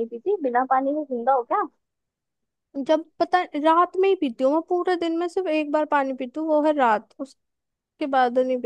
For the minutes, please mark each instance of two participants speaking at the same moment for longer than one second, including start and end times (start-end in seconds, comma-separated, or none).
none